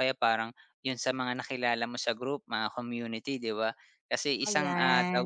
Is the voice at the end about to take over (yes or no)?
no